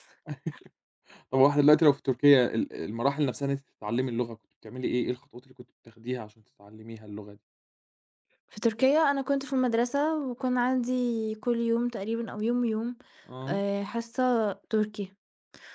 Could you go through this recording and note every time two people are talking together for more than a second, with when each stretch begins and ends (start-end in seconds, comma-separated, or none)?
none